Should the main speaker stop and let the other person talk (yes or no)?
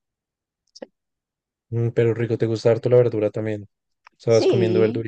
yes